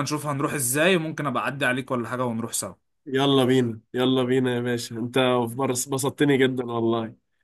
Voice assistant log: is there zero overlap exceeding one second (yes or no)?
yes